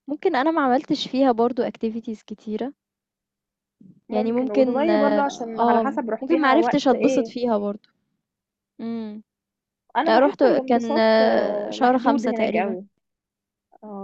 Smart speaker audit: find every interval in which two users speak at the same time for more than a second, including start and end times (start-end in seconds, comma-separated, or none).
4.1-7.3, 10.1-12.8